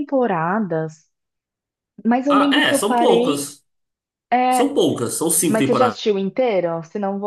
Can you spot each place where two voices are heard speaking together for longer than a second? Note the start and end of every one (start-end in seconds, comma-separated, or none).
2.3-3.5